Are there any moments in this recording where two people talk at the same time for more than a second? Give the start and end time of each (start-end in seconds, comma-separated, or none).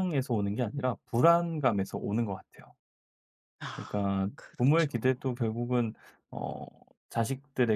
3.8-5.4